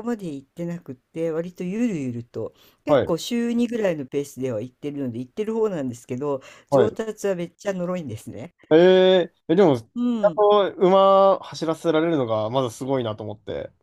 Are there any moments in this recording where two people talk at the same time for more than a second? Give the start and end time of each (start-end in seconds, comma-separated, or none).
none